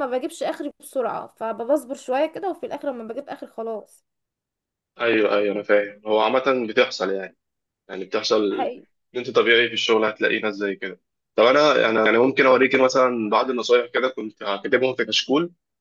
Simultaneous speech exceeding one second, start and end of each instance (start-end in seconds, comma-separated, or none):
none